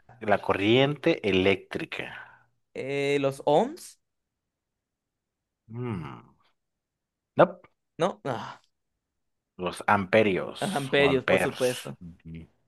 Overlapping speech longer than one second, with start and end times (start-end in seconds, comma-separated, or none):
10.6-12.0